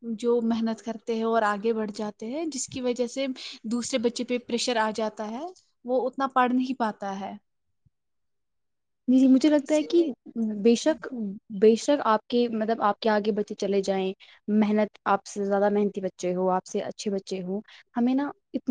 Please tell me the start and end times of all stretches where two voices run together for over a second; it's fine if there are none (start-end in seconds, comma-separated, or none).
none